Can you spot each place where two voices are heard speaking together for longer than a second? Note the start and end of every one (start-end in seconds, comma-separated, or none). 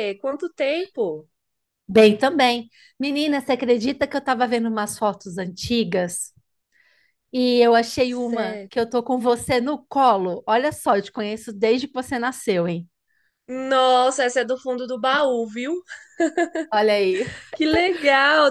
none